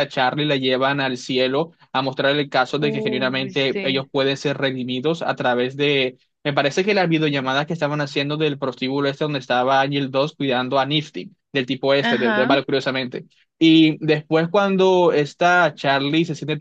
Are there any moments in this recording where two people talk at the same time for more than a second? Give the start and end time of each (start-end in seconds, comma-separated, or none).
2.8-4.1